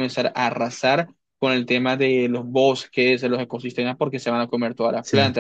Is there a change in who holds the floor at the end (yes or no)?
no